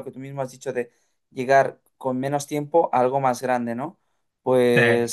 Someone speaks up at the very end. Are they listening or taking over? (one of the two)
listening